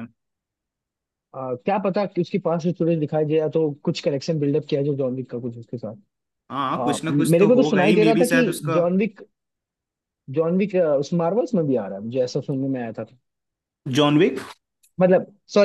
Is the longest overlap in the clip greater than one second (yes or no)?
yes